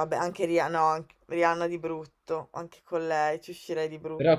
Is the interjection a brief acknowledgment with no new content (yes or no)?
no